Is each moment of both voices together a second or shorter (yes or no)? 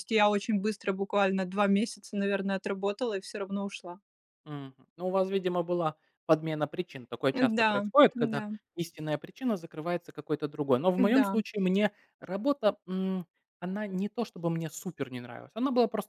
yes